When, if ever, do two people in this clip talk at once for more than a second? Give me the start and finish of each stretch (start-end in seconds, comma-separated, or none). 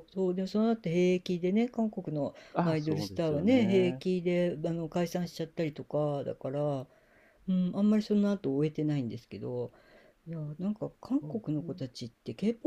2.5-4.0